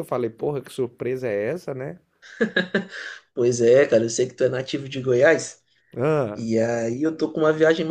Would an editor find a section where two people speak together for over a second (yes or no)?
no